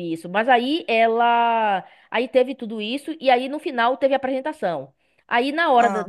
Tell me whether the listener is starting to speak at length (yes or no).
no